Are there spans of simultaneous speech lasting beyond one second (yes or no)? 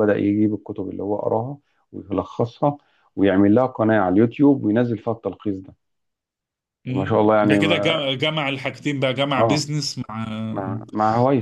yes